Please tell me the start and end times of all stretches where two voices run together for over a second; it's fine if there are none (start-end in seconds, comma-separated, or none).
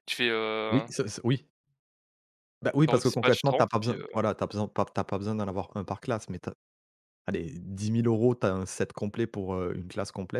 2.9-4.2